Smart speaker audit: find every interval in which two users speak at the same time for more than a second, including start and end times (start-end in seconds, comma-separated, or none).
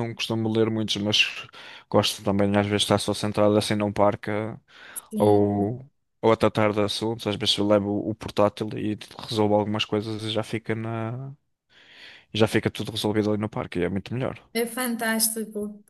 none